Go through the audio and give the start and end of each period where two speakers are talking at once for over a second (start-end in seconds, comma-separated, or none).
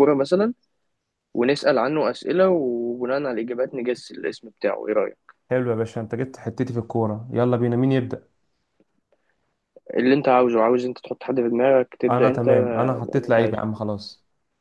12.1-13.6